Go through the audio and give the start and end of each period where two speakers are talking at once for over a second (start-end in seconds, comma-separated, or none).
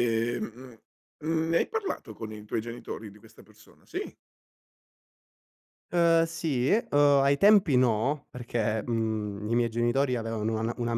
none